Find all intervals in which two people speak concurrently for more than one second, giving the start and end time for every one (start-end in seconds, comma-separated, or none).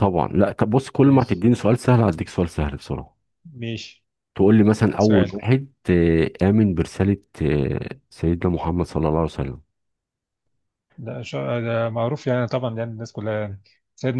none